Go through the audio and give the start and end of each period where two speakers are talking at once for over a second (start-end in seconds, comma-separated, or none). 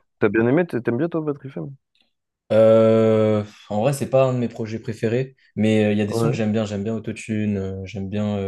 none